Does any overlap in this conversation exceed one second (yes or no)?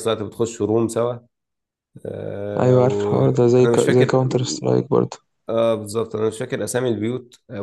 yes